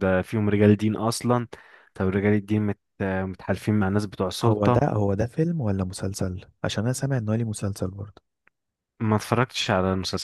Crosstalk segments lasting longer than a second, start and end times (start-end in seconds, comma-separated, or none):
none